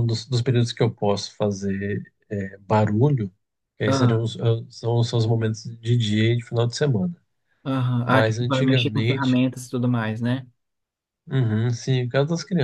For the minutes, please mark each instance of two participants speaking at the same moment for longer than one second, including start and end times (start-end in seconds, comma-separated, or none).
8.1-9.4